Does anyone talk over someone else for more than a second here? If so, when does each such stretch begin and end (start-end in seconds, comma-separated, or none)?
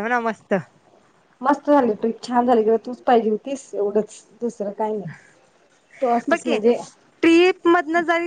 none